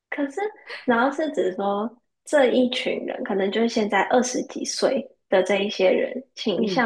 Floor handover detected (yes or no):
no